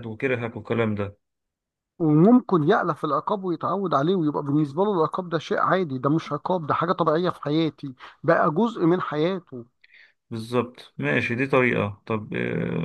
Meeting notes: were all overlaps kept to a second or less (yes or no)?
yes